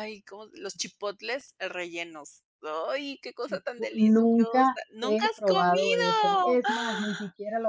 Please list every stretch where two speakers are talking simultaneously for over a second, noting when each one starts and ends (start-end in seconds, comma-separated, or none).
3.4-6.6